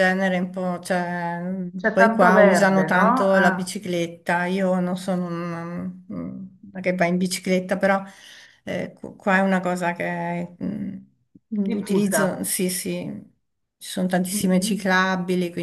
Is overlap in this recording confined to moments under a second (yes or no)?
no